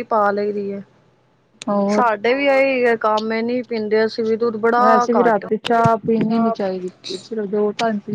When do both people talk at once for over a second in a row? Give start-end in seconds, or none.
4.8-6.5